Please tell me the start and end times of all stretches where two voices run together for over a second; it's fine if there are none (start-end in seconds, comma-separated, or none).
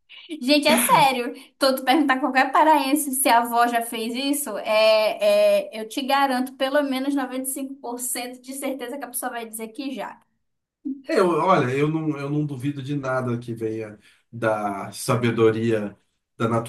none